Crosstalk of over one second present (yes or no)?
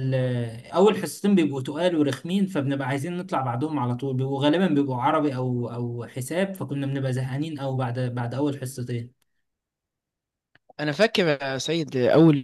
no